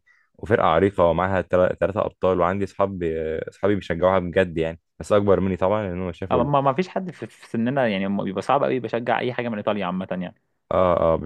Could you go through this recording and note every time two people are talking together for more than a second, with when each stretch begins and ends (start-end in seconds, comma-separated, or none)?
none